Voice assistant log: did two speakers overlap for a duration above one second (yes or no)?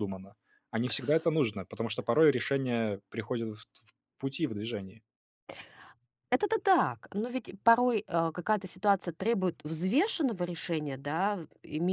no